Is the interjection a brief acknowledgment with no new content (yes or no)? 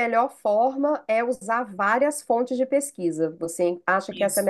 no